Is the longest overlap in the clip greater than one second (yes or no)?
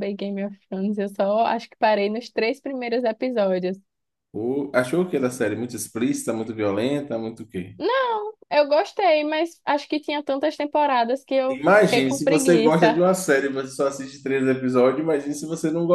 yes